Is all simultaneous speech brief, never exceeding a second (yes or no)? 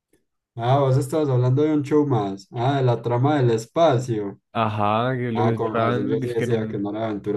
no